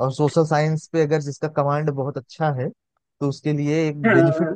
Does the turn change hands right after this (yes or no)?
no